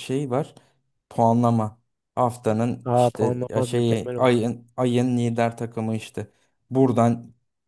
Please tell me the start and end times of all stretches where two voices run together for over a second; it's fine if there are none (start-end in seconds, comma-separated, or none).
2.9-4.4